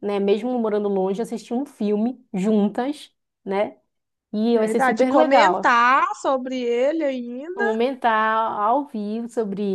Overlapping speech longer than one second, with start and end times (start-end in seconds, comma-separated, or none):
4.5-5.8